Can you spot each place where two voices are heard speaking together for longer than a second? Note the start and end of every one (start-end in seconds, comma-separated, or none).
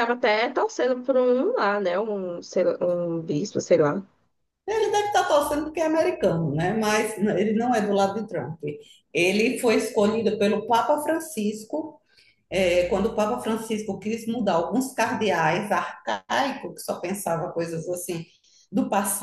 none